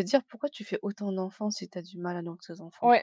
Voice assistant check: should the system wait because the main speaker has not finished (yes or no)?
no